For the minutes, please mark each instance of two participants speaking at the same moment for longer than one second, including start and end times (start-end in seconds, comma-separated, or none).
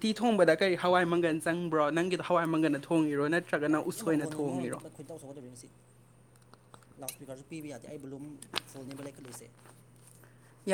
none